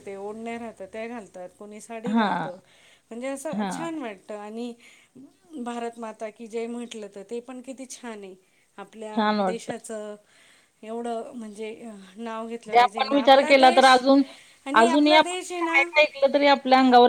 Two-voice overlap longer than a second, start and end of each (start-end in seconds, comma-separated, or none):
12.7-13.9